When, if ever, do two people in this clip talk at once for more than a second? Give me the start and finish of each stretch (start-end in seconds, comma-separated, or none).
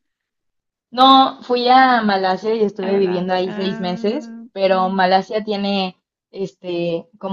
2.8-5.0